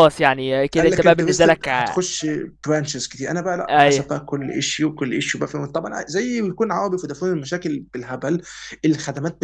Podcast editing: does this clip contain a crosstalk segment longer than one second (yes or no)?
yes